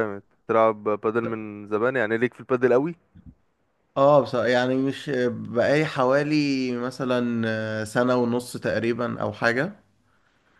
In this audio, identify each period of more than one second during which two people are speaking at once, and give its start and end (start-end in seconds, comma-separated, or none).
none